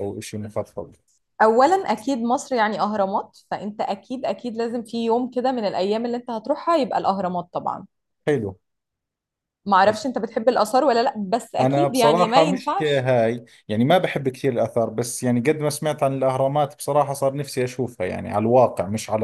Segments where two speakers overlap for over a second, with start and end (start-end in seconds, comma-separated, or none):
11.6-13.1